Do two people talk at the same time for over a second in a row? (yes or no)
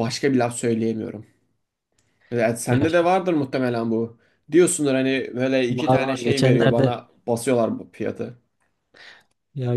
yes